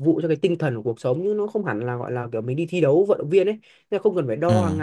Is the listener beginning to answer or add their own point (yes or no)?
no